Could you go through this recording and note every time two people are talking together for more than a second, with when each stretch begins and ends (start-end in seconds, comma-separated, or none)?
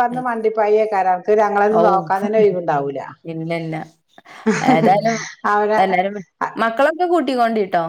none